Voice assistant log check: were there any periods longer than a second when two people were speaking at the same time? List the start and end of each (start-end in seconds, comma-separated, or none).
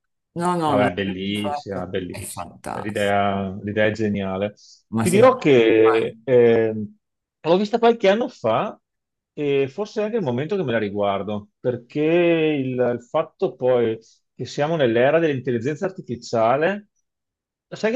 0.6-3.2, 5.0-6.2